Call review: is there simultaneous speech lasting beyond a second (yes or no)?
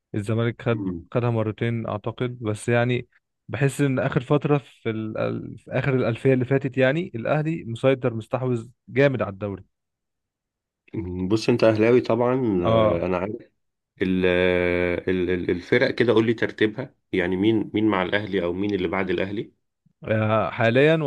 no